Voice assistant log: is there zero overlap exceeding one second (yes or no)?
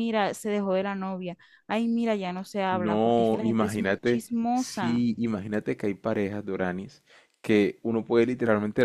no